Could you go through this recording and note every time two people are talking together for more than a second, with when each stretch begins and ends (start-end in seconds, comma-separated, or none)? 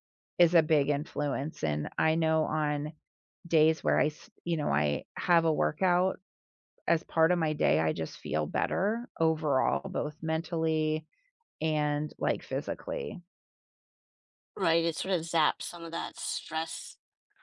none